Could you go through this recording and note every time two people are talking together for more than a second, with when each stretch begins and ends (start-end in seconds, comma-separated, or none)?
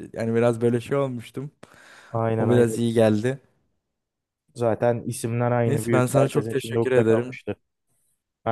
5.7-7.4